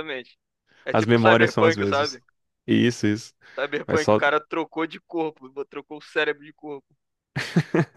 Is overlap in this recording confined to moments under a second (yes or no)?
no